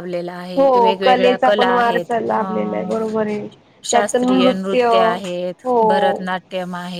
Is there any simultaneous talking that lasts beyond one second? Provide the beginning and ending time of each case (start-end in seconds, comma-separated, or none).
0.6-2.9